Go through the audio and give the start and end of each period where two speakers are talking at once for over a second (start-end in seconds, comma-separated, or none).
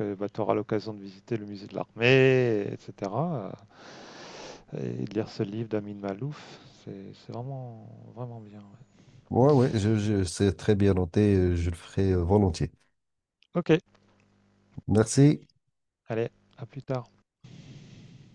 none